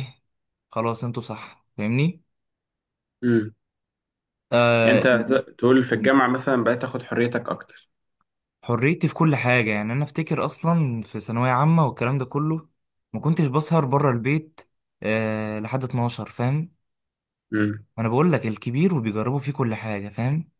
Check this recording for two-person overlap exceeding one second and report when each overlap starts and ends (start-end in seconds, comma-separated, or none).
none